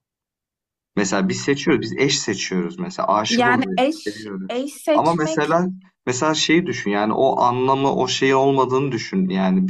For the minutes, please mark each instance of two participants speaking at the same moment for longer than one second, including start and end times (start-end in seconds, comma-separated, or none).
3.3-5.6